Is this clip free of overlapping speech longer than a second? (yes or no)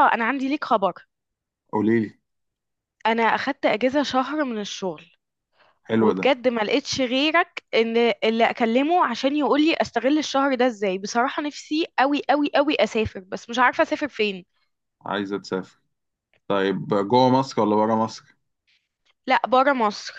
yes